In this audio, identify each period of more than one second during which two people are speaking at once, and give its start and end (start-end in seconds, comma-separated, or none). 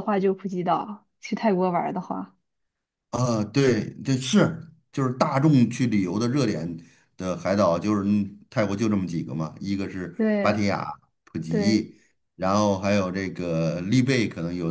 none